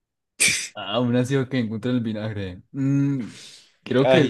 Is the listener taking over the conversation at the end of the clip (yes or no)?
no